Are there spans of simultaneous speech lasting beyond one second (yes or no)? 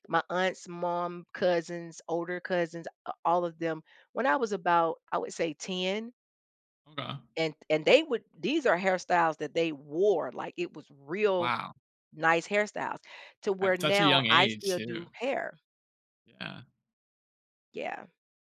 yes